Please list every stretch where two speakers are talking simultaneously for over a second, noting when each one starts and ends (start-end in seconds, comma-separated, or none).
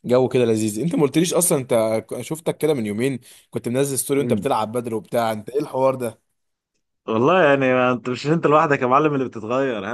none